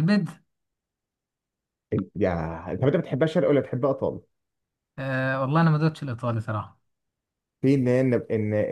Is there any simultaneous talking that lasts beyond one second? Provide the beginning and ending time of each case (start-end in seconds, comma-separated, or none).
none